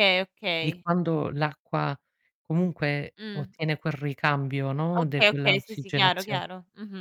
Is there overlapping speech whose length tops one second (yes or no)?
yes